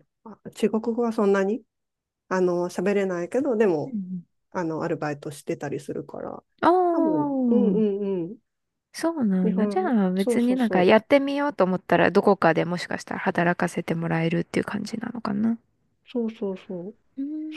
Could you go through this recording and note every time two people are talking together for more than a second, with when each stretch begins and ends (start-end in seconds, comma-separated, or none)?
9.4-10.9